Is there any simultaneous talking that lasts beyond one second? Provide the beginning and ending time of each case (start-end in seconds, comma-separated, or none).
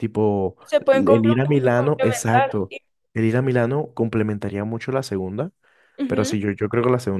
0.9-2.7